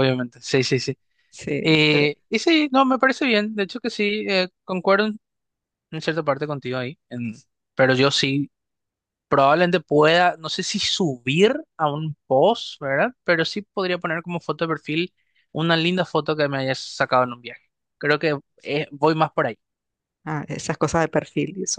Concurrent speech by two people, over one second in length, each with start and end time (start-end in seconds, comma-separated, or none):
none